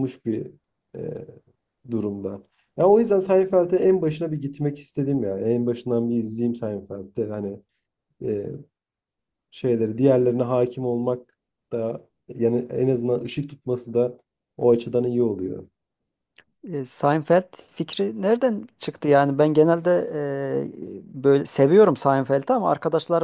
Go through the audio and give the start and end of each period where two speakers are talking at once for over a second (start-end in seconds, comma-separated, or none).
none